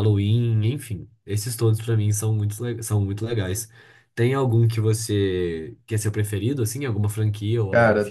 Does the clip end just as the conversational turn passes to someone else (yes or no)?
yes